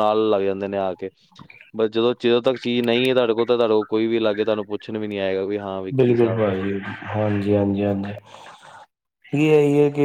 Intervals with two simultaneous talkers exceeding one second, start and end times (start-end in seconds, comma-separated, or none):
none